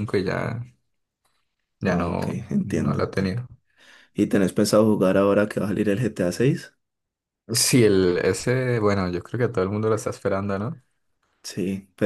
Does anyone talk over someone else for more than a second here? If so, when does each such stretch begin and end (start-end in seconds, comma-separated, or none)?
1.9-3.4